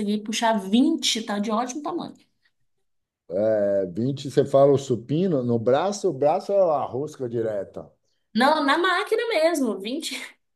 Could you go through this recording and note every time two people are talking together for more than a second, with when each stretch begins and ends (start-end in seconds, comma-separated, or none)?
none